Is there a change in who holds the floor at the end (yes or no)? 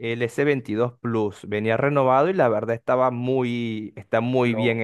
yes